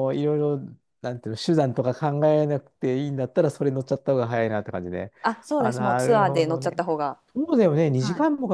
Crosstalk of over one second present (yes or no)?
yes